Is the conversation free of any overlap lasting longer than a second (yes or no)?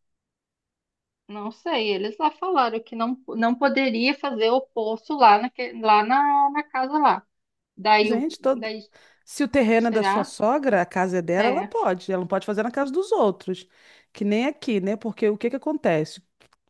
yes